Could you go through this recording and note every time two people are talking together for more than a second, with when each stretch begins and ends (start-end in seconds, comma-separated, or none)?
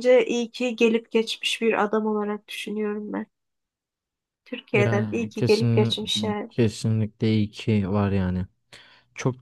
4.7-5.9